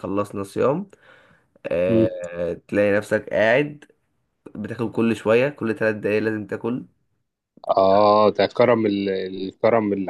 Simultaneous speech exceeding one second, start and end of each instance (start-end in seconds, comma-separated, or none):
none